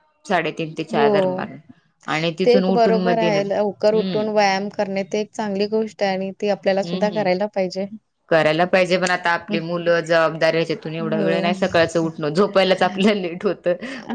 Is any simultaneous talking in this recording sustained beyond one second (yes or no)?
yes